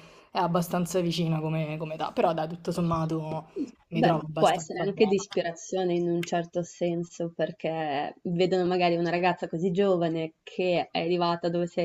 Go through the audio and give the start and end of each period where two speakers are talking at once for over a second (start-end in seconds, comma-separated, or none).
3.9-5.1